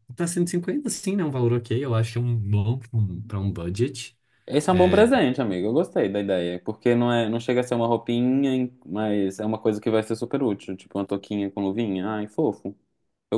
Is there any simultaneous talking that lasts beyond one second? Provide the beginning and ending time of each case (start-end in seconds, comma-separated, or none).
none